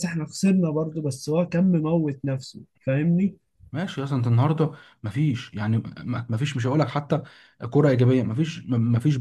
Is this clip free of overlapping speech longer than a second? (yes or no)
yes